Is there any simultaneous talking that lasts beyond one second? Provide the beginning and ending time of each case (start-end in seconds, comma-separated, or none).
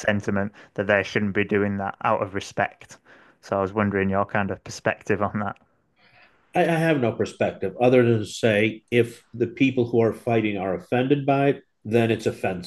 none